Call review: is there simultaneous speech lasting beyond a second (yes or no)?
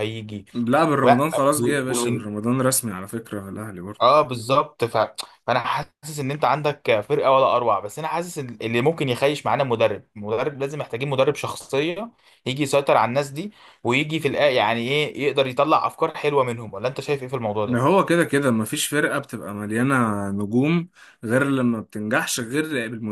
no